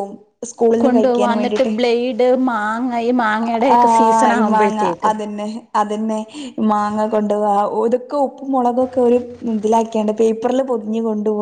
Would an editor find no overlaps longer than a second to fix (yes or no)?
yes